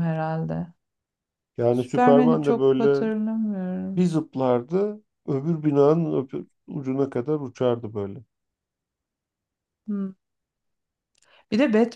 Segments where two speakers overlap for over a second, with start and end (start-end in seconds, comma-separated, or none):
1.7-3.1